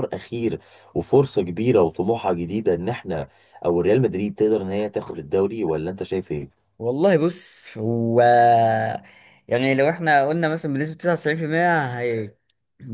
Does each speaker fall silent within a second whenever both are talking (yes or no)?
yes